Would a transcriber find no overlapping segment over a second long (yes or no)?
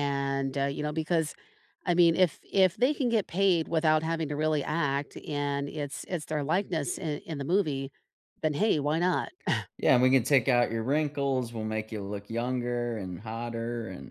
yes